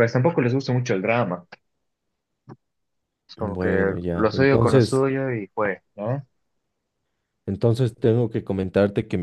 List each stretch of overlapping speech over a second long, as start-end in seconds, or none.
3.4-5.0